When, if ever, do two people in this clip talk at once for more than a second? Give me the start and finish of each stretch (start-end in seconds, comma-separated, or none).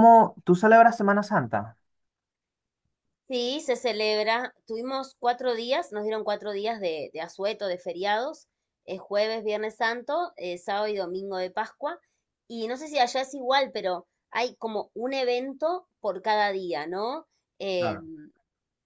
none